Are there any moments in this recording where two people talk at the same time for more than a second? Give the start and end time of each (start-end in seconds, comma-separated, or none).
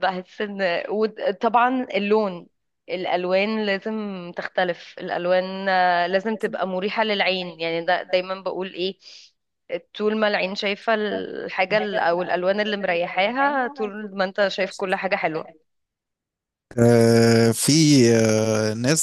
none